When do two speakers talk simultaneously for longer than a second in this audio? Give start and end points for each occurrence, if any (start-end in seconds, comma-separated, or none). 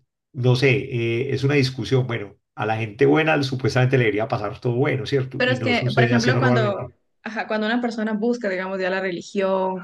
5.4-6.9